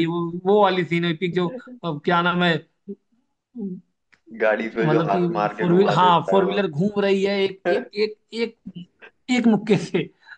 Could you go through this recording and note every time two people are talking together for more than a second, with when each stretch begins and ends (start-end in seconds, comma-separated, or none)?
4.6-6.6